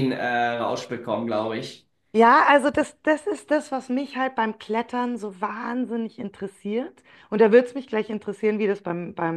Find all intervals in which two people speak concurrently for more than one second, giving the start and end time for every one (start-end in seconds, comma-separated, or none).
none